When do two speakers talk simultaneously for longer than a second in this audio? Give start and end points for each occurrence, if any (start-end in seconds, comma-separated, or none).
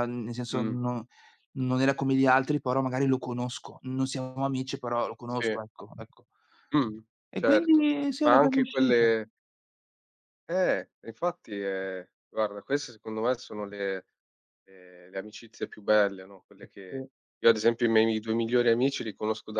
7.4-9.1